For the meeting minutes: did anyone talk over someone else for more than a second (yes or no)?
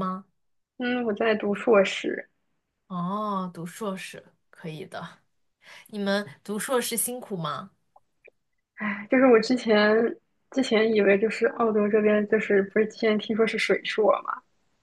no